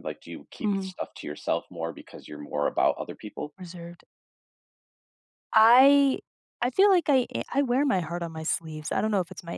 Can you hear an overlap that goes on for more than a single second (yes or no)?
no